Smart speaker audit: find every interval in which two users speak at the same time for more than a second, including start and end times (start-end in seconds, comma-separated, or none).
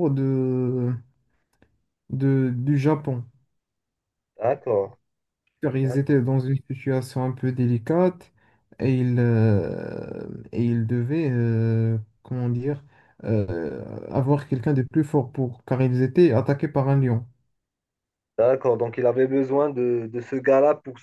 none